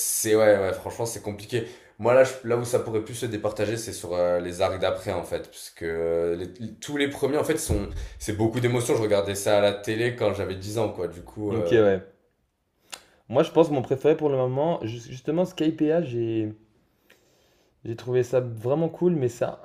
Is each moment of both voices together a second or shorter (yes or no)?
yes